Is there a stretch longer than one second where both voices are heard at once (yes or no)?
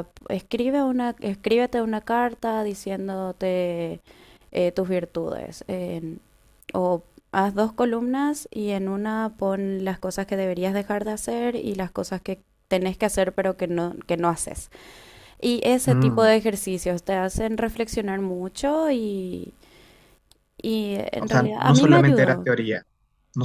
yes